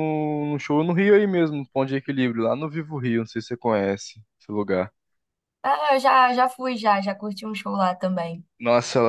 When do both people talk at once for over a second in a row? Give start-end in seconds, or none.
none